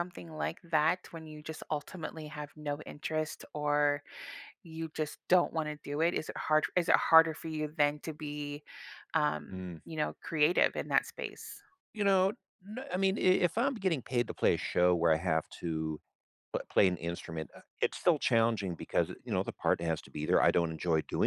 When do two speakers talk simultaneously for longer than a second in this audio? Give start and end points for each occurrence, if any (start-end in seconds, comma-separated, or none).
none